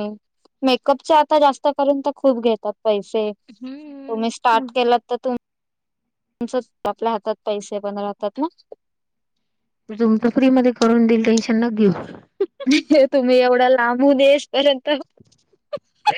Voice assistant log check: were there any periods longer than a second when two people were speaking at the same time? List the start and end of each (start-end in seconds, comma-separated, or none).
3.5-4.7